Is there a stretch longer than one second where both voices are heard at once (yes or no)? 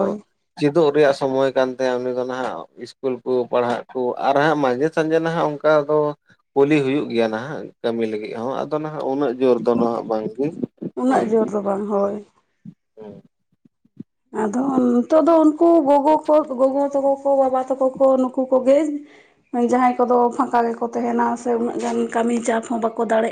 no